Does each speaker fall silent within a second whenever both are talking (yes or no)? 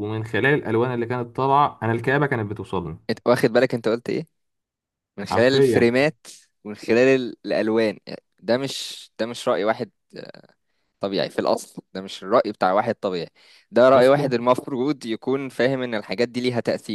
yes